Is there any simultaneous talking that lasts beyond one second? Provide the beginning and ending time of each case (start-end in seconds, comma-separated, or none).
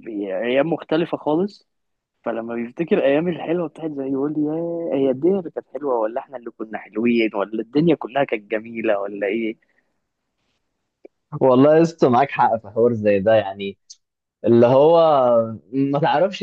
none